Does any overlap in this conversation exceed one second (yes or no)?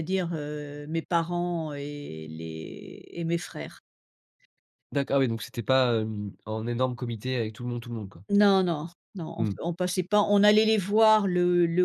no